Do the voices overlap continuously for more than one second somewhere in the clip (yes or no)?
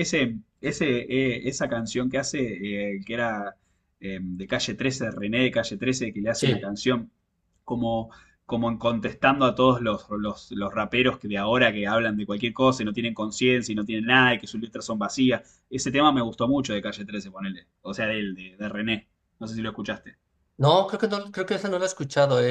no